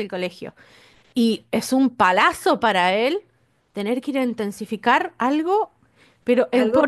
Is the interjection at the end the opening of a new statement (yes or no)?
yes